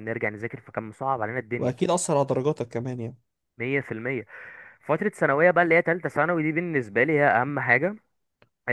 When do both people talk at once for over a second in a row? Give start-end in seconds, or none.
none